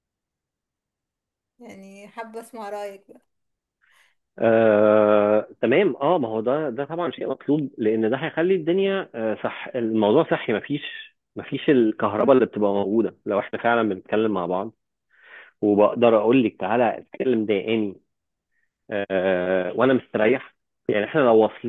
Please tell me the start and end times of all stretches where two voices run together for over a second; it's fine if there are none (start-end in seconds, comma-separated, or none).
none